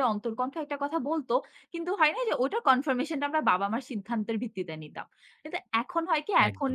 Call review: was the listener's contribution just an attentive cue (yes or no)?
yes